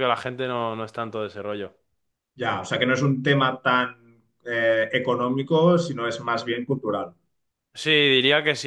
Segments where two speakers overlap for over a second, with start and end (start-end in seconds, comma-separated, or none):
none